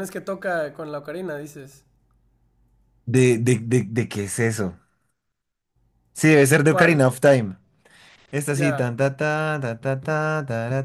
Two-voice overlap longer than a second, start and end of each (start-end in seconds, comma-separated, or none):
none